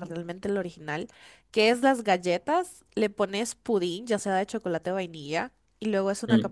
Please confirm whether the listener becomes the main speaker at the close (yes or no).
no